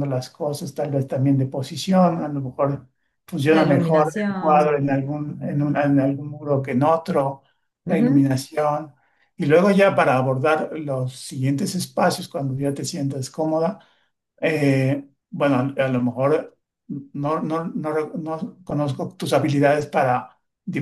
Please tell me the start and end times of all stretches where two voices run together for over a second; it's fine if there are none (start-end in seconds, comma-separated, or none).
3.5-4.8